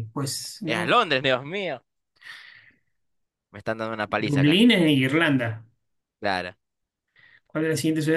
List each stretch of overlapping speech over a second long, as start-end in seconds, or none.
none